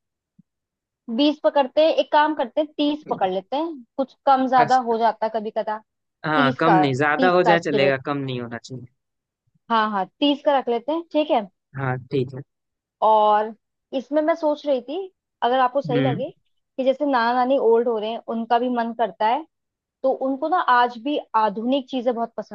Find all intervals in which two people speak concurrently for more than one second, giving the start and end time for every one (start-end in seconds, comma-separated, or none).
6.3-8.0